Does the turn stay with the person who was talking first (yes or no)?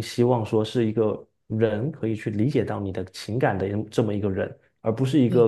yes